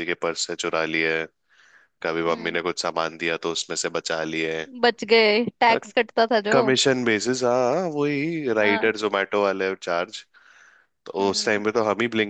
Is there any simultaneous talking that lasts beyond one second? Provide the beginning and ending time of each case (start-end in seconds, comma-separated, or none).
none